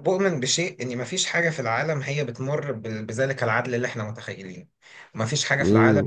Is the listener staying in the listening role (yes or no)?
yes